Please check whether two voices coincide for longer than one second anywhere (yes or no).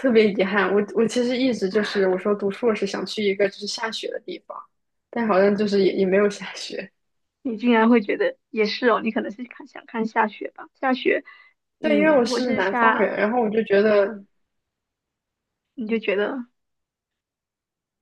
yes